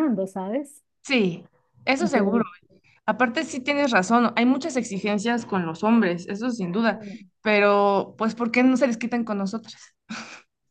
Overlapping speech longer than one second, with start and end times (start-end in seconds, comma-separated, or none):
none